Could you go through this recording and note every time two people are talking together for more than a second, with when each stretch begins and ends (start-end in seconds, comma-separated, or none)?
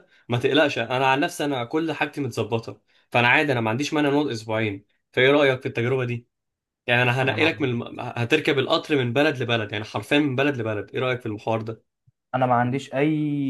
none